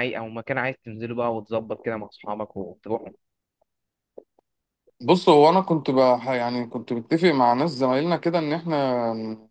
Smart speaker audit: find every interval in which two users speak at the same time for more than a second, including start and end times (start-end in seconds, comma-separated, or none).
none